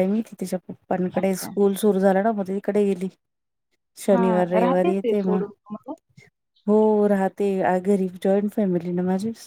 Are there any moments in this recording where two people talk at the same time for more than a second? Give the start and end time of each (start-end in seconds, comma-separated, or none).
4.1-5.4